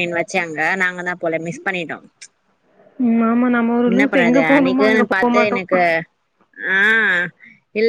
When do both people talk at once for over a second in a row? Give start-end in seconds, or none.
3.9-5.6